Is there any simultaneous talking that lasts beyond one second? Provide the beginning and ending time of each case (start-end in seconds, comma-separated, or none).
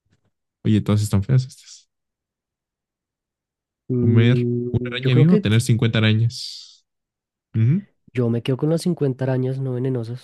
4.0-5.6